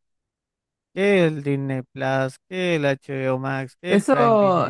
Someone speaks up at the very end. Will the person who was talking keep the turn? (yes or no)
no